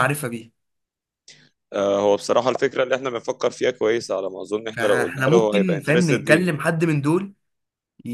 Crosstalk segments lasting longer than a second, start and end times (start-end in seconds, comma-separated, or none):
4.7-6.5